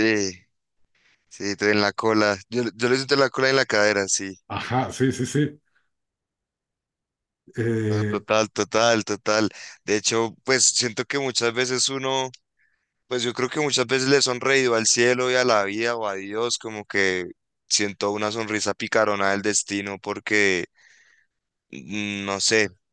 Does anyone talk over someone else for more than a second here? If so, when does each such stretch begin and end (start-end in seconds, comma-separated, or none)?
none